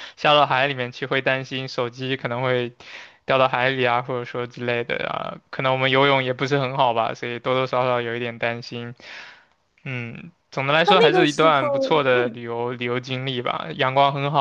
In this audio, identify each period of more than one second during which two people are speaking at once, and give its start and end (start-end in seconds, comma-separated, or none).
10.8-12.4